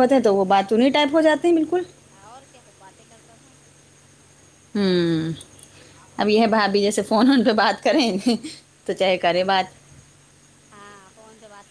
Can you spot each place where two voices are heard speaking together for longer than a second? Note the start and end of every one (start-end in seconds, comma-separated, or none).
none